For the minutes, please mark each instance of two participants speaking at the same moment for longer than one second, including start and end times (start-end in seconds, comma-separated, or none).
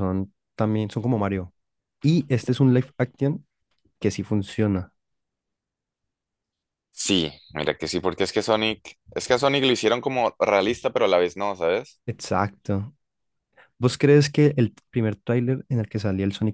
none